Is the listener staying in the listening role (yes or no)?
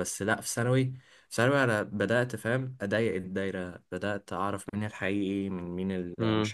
yes